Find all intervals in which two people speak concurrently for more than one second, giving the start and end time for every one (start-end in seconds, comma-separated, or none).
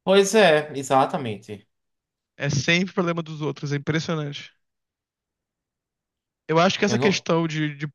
none